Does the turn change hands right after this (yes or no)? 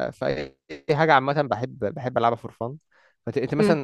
no